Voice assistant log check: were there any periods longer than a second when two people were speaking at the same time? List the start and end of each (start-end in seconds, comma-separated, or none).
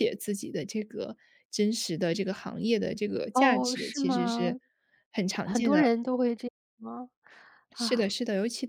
3.3-4.6